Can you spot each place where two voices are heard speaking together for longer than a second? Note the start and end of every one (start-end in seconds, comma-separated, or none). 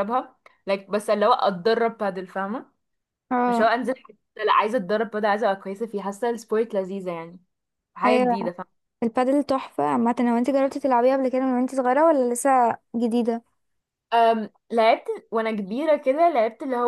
none